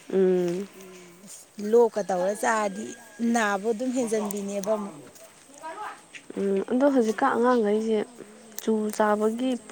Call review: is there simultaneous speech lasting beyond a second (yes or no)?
no